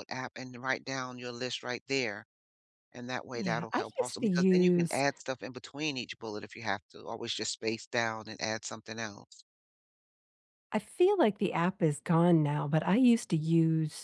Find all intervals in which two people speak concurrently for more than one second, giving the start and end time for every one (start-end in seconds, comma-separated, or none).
3.4-5.0